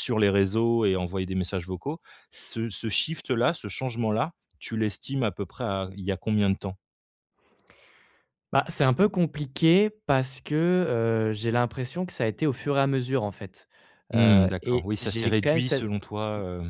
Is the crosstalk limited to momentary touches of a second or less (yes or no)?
no